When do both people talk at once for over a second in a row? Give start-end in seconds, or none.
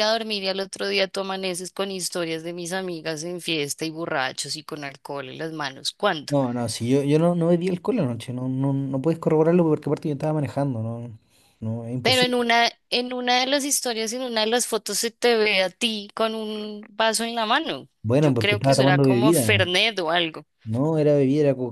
18.0-19.7